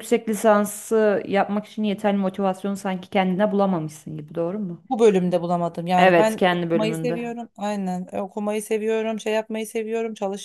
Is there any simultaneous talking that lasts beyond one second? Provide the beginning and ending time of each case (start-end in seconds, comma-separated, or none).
6.0-7.2